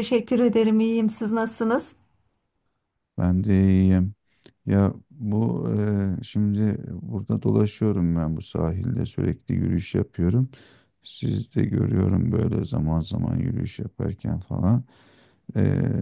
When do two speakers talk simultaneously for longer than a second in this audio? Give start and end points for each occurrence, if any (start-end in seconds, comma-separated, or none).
none